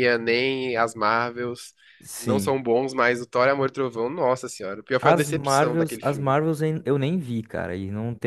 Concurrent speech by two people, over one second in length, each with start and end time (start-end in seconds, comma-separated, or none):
5.0-6.3